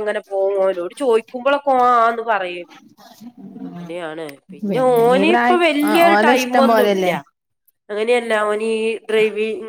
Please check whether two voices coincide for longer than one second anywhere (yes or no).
yes